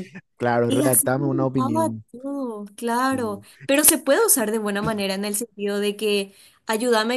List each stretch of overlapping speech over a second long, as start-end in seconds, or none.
0.7-2.0